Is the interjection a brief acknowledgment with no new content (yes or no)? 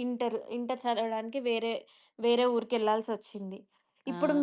yes